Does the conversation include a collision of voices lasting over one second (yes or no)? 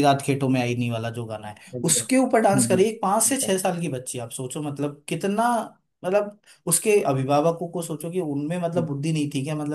yes